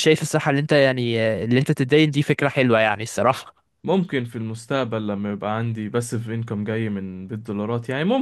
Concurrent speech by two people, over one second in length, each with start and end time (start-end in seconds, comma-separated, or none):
none